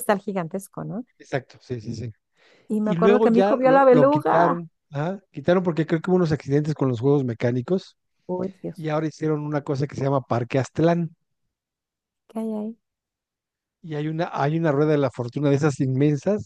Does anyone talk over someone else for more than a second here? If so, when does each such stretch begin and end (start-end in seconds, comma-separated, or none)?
2.8-4.6